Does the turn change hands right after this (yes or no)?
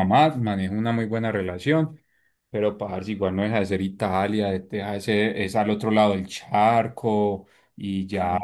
no